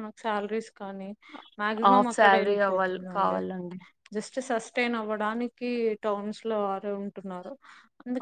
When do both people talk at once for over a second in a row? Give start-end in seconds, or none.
1.9-3.4